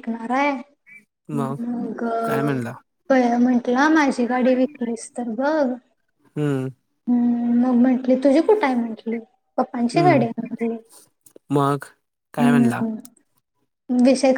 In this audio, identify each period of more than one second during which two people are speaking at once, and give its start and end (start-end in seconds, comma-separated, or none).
none